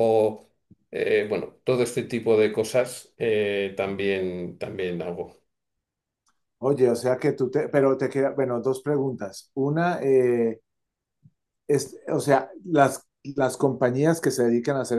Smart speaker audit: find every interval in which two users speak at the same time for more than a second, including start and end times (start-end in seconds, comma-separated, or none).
none